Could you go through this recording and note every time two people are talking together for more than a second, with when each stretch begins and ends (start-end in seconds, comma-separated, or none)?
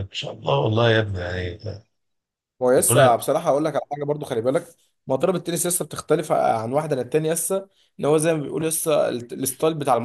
none